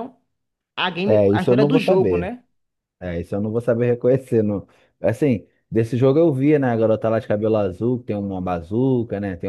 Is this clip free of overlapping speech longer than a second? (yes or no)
no